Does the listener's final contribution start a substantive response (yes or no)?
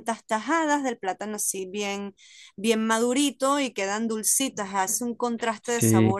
no